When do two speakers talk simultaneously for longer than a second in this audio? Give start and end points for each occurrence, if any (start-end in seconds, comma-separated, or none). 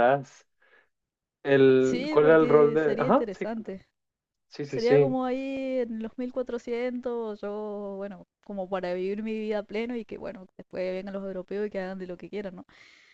1.8-3.8